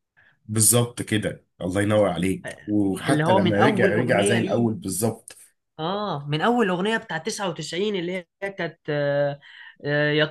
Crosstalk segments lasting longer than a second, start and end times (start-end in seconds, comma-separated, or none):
3.1-4.7